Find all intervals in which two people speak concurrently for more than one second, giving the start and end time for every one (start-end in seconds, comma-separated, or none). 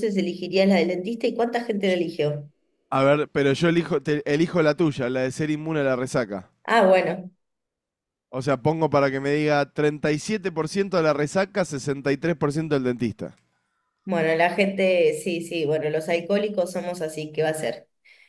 none